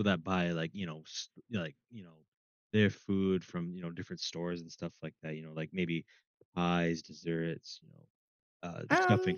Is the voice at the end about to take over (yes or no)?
no